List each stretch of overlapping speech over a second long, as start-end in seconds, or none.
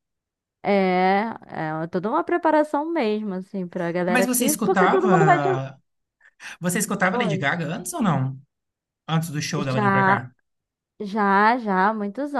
4.1-5.5